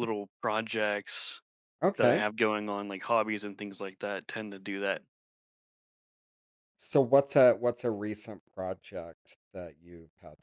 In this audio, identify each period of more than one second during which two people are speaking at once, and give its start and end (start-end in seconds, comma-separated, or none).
none